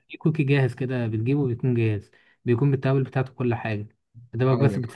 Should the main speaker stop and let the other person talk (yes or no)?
no